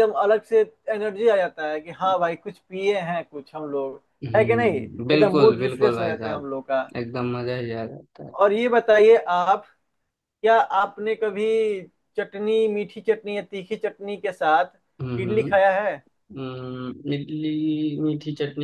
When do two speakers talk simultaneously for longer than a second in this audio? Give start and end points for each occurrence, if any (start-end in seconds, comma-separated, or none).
4.4-6.5